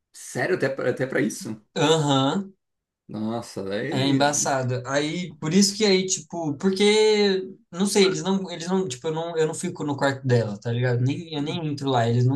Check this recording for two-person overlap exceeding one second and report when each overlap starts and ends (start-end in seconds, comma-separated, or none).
none